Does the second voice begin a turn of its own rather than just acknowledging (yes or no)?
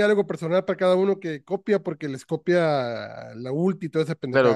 yes